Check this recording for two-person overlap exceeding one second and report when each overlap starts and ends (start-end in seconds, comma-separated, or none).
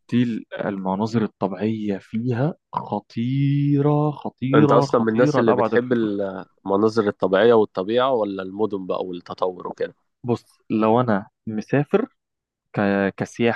4.5-6.1